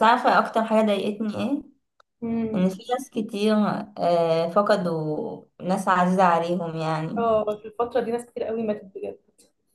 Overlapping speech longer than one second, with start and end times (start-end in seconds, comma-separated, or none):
none